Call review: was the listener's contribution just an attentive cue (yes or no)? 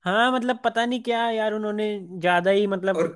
no